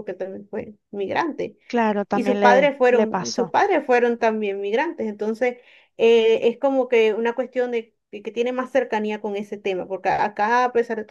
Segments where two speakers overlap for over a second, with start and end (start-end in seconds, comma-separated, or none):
2.1-3.5